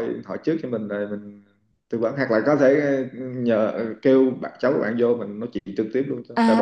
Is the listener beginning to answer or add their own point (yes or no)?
yes